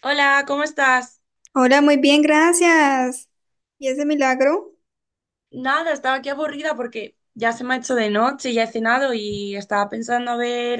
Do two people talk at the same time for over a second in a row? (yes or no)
no